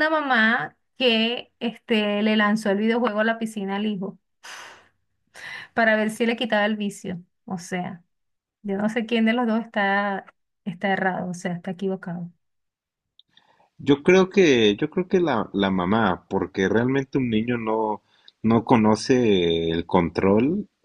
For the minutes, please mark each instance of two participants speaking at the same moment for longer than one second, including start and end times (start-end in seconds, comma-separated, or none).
none